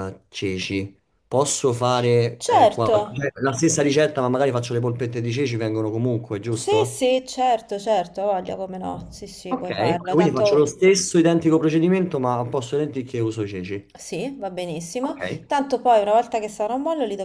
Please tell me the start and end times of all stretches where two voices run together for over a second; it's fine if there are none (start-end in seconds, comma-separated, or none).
9.5-10.7